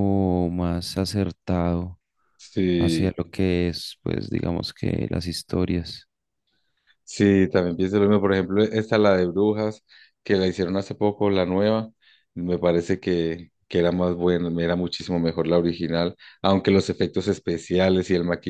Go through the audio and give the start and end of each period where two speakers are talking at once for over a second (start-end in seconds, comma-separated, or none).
none